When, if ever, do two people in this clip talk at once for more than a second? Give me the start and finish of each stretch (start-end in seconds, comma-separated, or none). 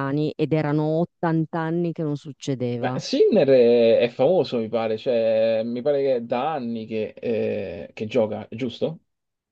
none